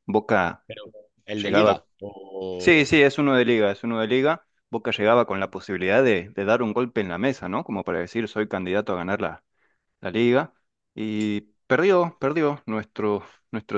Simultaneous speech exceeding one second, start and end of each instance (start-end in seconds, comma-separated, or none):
none